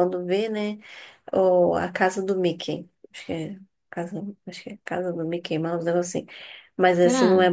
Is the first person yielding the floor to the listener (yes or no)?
no